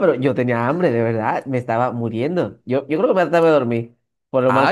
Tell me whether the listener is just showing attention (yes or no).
no